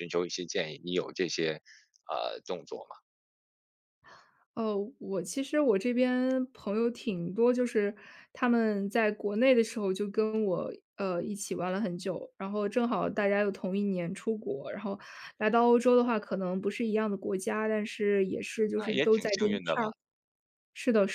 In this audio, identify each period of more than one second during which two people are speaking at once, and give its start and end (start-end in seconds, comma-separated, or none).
18.7-19.9